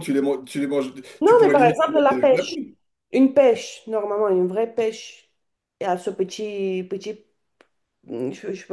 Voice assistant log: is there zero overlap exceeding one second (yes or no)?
no